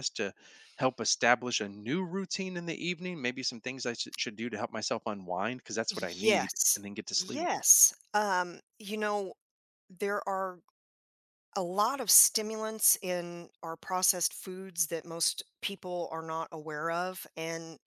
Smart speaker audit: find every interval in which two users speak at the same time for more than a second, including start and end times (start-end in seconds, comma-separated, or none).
5.9-7.5